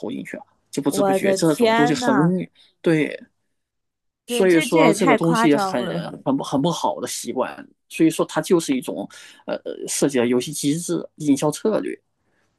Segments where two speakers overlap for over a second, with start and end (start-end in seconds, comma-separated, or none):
0.9-2.4, 4.2-5.9